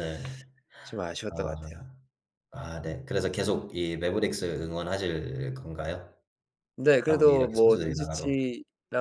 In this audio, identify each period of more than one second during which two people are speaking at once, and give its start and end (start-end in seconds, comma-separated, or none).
7.1-8.4